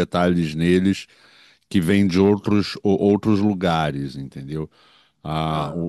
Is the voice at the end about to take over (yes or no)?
no